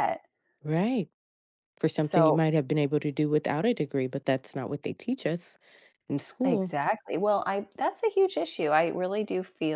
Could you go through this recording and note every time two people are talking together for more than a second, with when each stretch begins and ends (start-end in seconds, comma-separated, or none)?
none